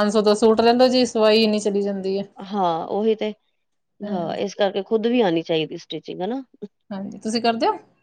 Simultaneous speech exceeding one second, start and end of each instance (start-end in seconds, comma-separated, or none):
none